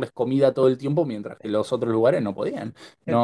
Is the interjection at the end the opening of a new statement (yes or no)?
yes